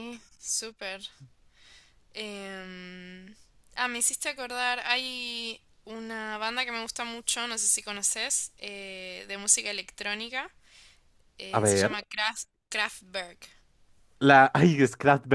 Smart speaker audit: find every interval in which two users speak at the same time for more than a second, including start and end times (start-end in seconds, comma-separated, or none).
none